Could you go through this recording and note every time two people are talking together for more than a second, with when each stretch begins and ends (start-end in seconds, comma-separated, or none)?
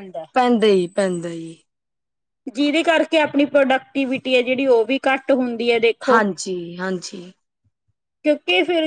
none